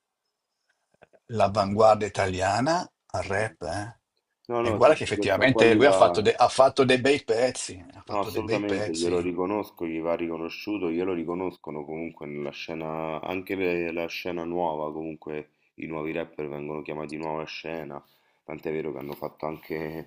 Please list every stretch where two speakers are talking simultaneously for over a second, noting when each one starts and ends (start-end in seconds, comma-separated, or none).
4.7-6.0, 8.1-9.3